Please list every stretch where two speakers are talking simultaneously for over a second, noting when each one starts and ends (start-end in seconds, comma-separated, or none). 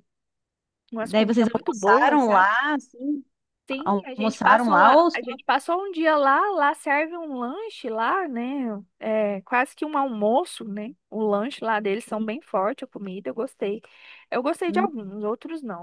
1.0-2.5, 3.7-5.2